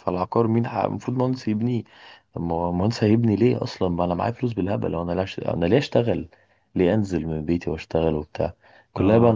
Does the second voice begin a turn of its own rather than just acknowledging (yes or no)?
no